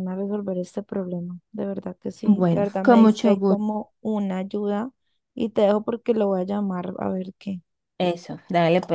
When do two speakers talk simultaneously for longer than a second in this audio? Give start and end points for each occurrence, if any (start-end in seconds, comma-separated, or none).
2.2-3.8